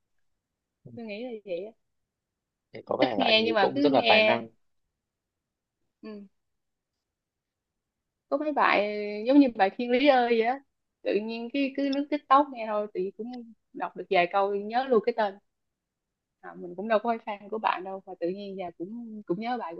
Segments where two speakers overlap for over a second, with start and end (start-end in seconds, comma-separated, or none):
3.0-4.4